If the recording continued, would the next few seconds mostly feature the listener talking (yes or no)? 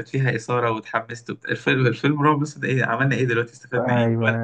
yes